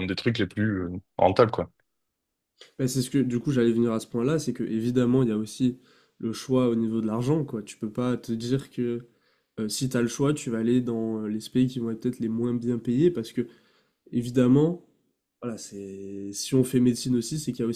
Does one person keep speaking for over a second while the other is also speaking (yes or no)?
no